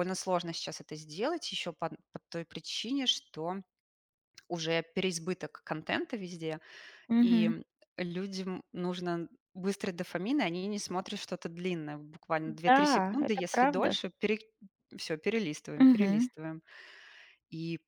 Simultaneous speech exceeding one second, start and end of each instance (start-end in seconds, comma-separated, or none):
12.7-13.9